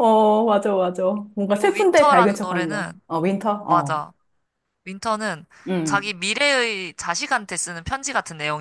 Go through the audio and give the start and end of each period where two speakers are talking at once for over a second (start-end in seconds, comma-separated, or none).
1.5-3.0